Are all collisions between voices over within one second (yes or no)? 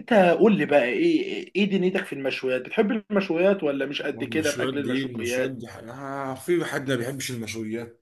no